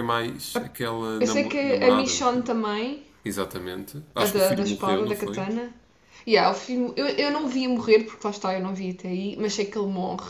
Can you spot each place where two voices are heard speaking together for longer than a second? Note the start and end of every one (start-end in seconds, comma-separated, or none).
1.2-2.5, 4.2-5.5